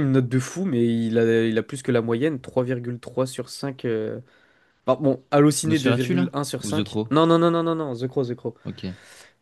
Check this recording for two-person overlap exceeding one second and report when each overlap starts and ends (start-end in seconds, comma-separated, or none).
5.6-7.2